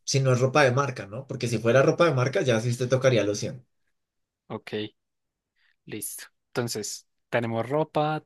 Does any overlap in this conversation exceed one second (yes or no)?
no